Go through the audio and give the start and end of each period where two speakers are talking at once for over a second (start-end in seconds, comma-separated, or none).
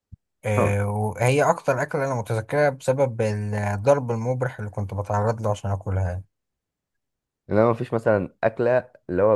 none